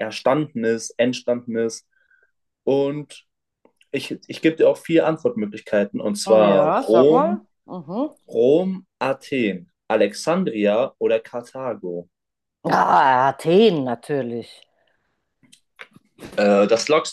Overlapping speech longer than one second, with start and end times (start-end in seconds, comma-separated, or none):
6.2-7.5